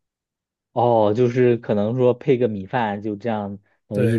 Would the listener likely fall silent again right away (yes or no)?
no